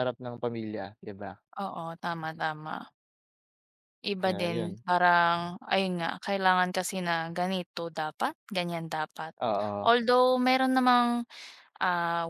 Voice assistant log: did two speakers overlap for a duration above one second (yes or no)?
no